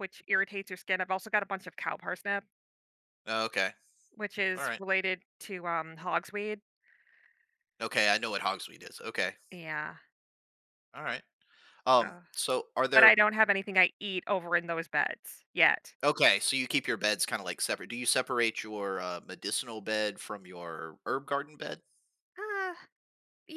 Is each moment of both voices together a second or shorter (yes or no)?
yes